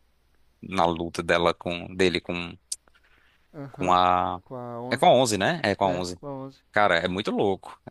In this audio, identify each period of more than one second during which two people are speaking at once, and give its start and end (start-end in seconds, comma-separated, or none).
none